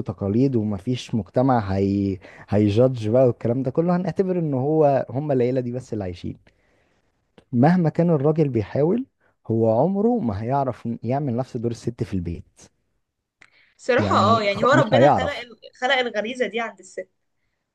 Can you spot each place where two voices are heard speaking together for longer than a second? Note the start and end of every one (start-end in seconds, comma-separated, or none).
14.0-15.4